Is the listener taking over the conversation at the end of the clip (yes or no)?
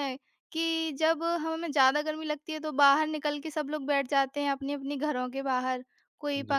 no